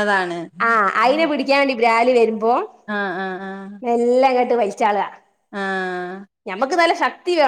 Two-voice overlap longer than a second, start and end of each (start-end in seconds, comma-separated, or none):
none